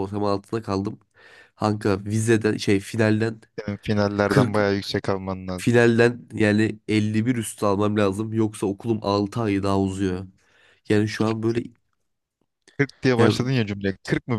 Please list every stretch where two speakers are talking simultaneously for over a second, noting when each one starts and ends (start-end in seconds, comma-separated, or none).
none